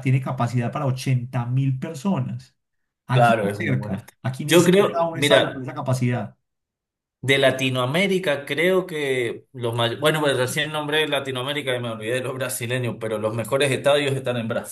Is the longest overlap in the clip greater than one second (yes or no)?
yes